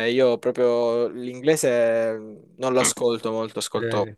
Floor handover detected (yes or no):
yes